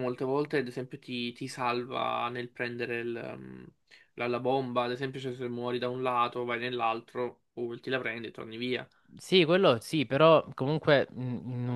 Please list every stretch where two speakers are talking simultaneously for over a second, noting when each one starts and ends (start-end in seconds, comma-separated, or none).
none